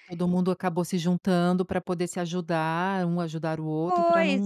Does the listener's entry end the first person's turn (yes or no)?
yes